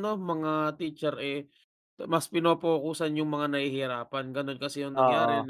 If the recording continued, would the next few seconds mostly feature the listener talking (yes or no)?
no